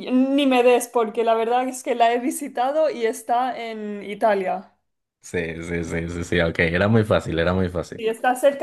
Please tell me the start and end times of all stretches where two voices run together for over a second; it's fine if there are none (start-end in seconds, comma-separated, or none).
none